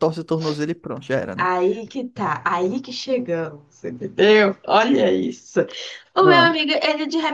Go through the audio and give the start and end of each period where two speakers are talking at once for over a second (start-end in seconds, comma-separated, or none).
none